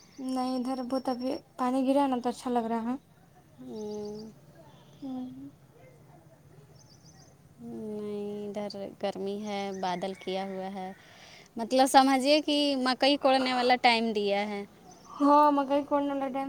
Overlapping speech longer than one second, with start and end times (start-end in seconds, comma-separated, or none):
none